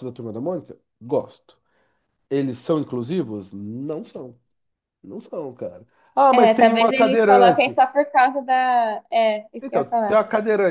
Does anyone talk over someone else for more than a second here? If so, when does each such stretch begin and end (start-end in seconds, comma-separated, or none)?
6.3-7.8